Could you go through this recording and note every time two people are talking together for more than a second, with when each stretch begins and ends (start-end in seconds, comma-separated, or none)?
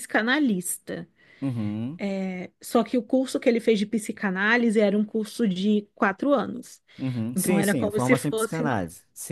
7.3-8.8